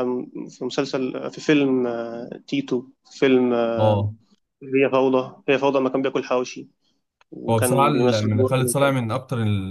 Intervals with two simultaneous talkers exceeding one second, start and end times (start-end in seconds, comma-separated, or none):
7.5-9.1